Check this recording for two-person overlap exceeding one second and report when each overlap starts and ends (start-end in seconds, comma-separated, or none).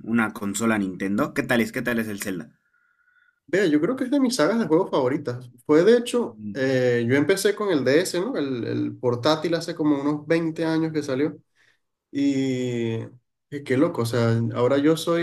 none